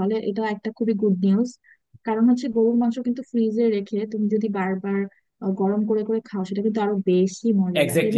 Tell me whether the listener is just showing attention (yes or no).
no